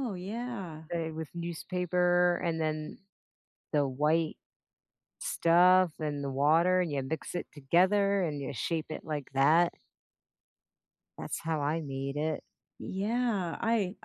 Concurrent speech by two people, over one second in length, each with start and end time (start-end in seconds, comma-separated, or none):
none